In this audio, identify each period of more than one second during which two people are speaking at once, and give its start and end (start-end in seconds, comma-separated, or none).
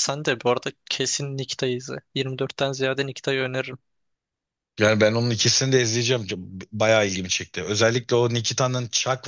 none